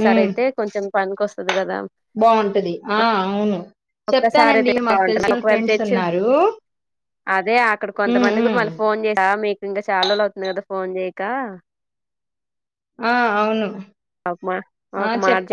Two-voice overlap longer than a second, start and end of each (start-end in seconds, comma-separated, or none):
4.1-6.0